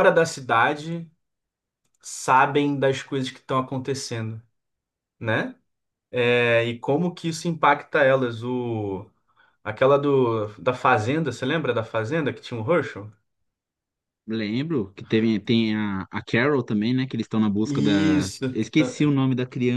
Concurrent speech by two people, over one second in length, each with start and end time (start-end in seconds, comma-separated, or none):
17.6-19.1